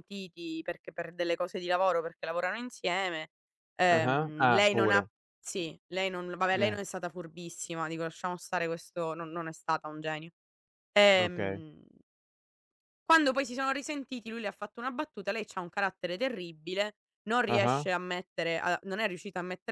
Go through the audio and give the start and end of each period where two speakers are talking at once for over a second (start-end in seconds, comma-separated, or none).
3.9-5.1